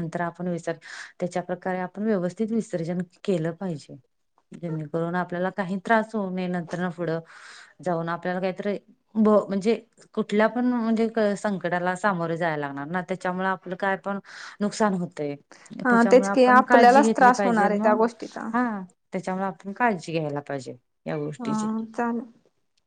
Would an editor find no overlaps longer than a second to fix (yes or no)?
no